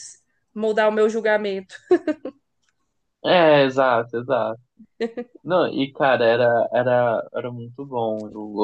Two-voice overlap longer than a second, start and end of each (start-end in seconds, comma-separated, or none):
none